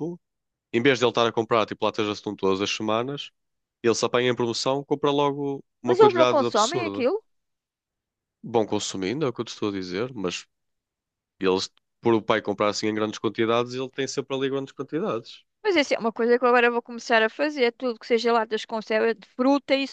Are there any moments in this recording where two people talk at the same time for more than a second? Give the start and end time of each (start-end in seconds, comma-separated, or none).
5.8-7.1